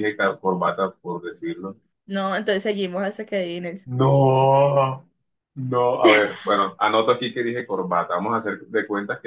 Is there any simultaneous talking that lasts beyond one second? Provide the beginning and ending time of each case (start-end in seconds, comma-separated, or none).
none